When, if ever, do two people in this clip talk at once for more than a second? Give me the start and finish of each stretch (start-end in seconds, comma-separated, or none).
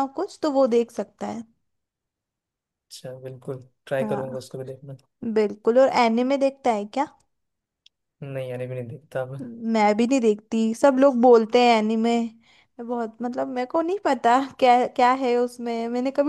none